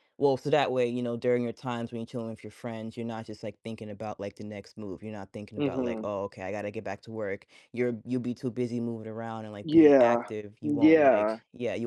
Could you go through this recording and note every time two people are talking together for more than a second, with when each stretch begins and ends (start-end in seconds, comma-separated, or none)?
9.6-11.4